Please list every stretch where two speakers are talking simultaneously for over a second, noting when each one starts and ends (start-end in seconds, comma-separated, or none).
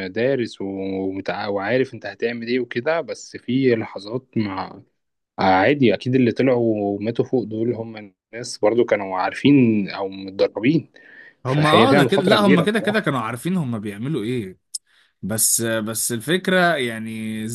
11.5-13.1